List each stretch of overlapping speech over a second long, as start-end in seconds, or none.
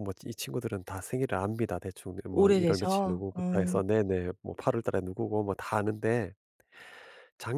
2.3-3.8